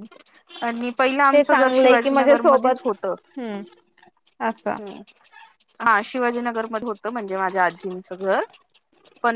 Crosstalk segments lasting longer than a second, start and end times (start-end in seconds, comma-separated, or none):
1.3-2.9